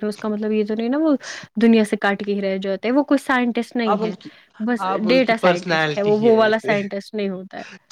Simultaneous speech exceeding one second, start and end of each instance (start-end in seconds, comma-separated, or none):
4.9-6.8